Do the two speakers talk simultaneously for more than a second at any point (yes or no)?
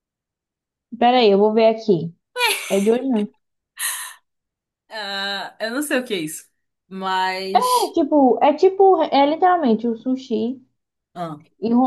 no